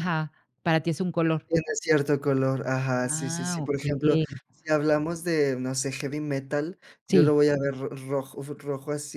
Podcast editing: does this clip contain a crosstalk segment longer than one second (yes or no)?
yes